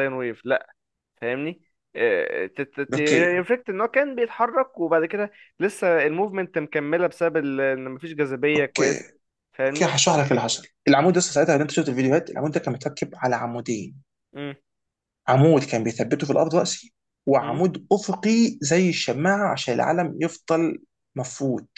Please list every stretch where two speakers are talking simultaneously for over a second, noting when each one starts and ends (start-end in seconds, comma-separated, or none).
none